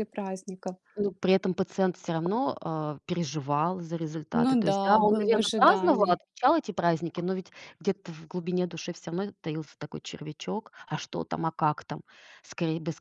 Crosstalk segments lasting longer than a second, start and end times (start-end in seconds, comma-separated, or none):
4.3-6.2